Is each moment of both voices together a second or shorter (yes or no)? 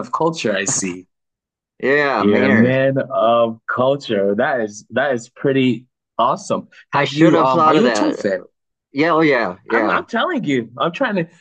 no